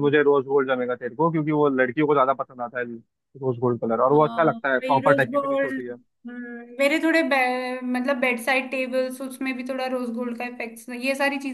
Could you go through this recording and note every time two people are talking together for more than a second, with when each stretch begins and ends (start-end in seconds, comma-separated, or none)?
4.1-5.7